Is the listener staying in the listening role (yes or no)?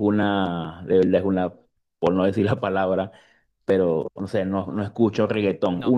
yes